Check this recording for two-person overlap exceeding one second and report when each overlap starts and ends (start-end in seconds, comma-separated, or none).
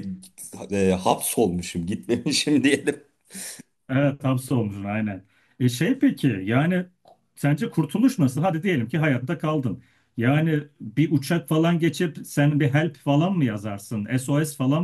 none